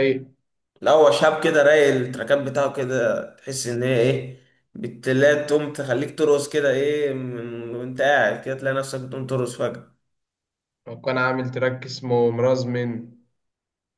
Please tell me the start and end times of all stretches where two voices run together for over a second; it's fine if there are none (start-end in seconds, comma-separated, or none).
none